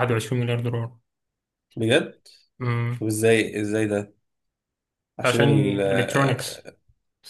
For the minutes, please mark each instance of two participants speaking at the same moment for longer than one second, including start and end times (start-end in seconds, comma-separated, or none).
5.2-6.7